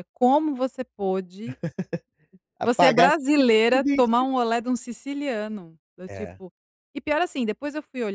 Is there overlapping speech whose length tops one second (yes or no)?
yes